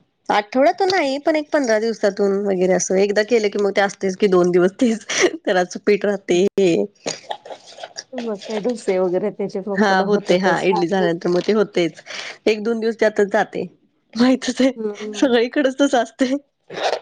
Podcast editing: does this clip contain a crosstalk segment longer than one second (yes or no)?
no